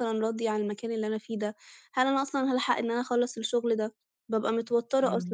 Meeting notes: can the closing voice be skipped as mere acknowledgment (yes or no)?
yes